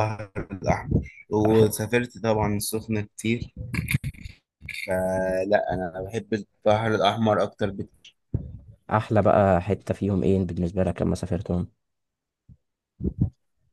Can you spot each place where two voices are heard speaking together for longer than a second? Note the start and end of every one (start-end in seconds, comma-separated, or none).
none